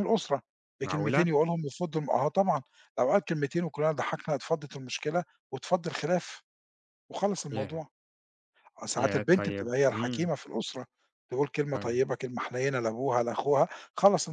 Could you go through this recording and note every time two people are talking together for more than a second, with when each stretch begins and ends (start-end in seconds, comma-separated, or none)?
9.0-10.3